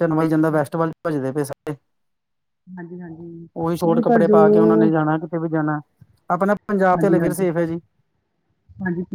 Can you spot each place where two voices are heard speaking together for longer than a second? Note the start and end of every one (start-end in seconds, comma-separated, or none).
none